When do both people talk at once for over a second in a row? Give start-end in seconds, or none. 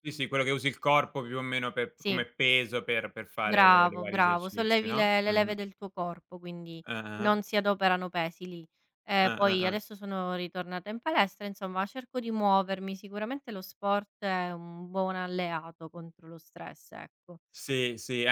3.4-5.5